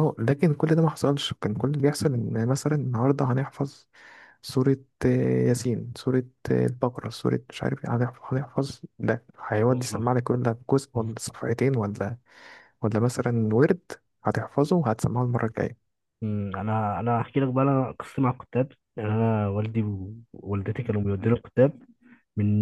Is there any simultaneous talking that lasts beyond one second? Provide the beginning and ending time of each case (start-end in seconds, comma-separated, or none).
none